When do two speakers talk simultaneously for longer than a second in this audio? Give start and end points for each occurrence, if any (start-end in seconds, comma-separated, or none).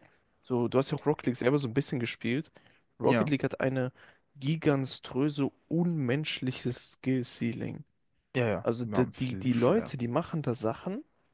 8.6-9.9